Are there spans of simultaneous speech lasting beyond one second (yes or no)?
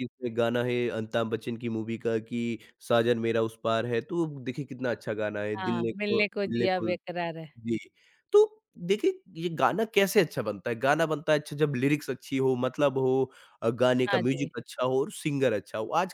yes